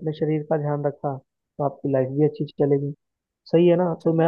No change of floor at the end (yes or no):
yes